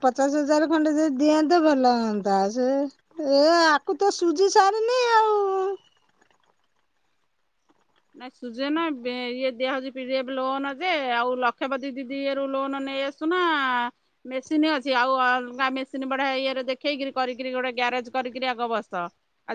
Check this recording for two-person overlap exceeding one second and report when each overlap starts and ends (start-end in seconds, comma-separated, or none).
none